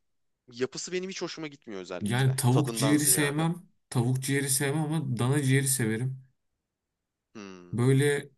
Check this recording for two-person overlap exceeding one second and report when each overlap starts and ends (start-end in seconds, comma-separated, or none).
2.0-3.5